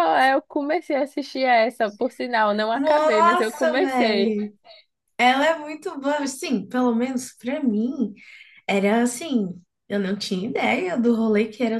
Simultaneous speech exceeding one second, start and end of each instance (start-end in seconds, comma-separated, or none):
2.7-4.4